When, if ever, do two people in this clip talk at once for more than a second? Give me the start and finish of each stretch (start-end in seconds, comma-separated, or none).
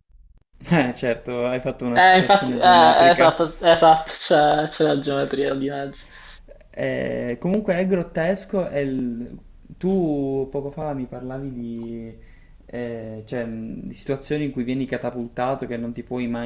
1.9-3.5